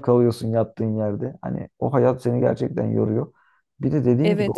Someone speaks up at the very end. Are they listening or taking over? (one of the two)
listening